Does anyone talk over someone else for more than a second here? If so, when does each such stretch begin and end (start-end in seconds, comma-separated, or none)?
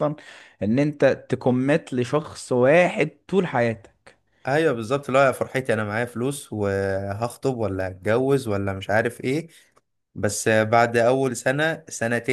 none